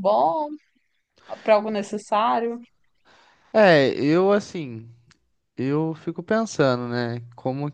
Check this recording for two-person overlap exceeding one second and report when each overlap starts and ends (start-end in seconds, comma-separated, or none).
none